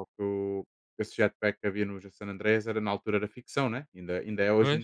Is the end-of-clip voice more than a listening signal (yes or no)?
no